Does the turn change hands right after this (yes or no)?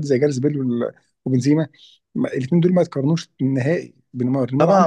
yes